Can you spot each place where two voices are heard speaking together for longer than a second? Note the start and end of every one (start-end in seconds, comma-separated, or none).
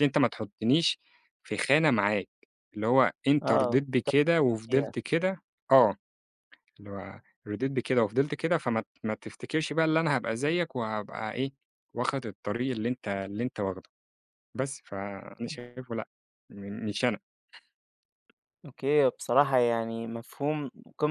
3.4-4.9